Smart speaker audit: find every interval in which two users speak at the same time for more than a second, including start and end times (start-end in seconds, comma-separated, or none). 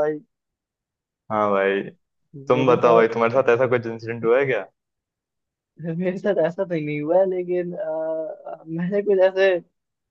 none